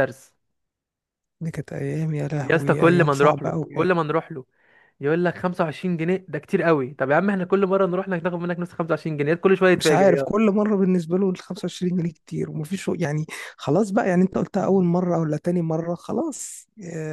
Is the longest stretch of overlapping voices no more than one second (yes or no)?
no